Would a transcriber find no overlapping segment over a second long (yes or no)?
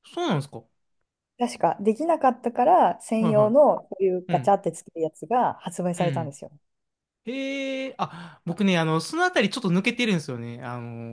yes